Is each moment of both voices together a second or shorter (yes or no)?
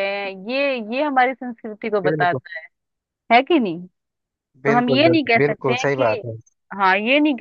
no